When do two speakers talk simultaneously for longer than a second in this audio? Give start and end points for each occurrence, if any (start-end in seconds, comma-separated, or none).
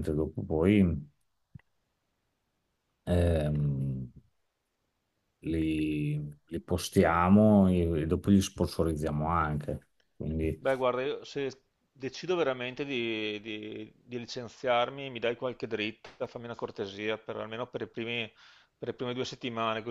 none